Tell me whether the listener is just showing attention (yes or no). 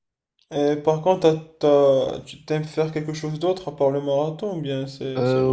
no